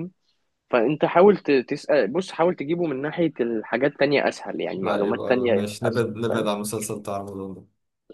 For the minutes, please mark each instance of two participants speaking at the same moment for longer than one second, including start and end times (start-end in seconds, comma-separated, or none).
4.8-6.5